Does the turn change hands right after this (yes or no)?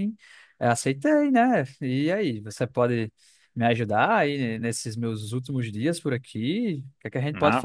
no